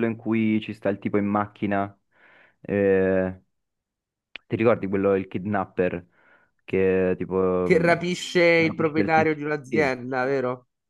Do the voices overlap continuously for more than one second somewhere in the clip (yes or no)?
yes